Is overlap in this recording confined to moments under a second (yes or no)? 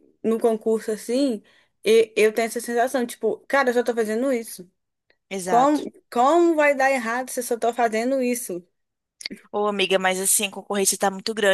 yes